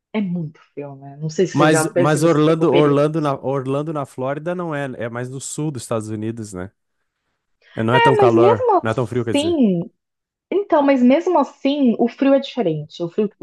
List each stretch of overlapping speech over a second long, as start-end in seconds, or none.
1.5-3.3, 7.9-9.6